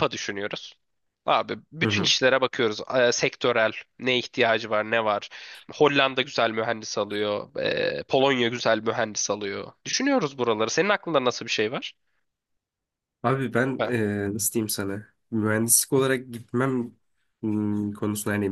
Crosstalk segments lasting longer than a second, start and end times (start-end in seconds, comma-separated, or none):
none